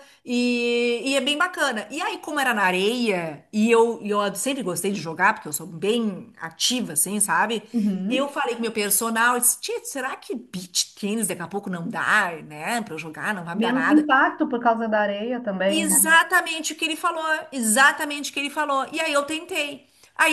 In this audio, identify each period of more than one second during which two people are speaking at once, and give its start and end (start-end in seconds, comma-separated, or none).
none